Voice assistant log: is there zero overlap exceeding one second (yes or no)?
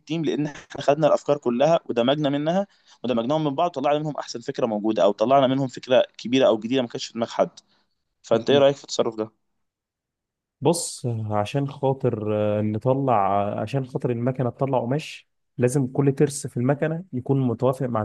yes